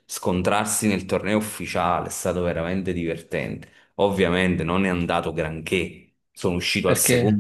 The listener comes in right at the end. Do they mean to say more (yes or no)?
no